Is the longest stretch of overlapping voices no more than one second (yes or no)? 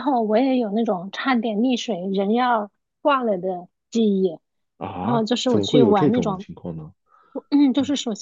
no